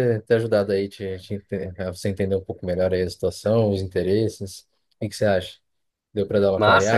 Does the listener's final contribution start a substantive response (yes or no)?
yes